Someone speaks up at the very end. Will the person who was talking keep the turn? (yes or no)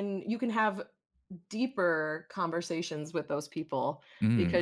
yes